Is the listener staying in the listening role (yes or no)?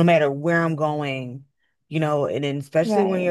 yes